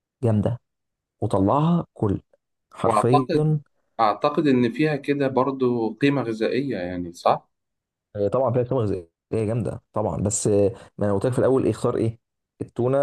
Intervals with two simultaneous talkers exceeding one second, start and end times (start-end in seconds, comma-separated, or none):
none